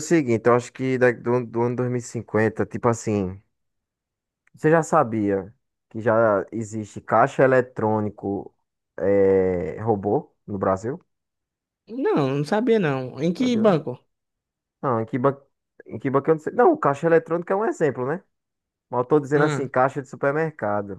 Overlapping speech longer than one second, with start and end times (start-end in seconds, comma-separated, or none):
none